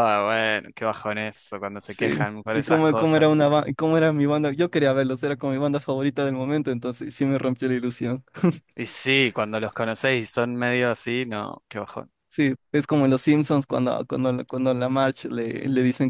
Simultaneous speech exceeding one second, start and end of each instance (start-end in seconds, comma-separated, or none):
1.9-3.3